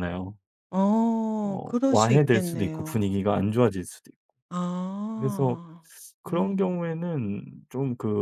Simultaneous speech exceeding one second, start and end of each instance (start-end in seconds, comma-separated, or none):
1.4-3.2